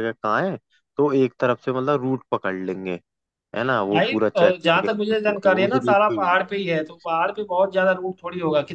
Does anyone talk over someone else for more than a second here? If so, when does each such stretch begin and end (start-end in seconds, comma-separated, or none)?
3.9-6.5